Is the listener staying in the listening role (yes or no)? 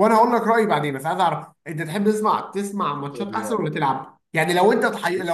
yes